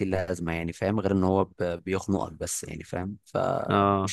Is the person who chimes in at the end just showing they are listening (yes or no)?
no